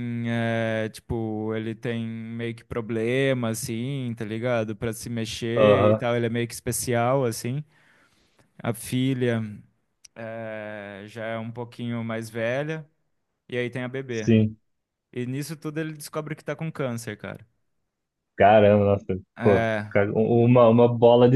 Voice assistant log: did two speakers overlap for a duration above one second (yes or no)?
no